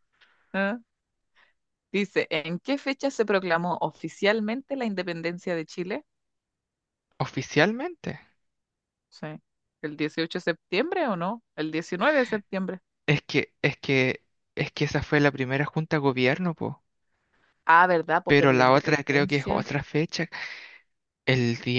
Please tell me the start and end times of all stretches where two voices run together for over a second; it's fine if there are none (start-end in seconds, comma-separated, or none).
18.3-19.7